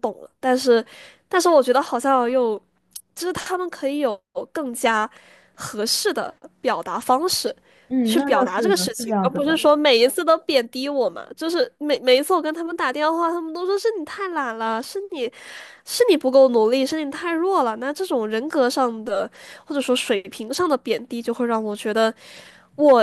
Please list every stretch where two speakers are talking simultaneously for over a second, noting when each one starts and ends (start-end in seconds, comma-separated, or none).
8.0-9.6